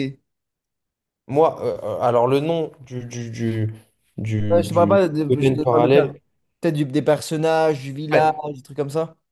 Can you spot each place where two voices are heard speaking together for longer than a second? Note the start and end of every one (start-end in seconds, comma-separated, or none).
4.5-6.1